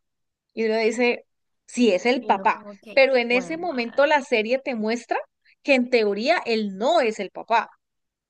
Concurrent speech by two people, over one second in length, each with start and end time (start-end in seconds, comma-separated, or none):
2.2-4.1